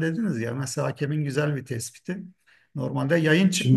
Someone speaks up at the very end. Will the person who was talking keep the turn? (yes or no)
yes